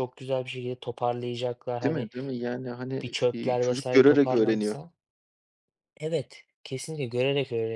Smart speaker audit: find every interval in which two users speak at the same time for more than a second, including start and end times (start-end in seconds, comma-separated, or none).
3.0-4.8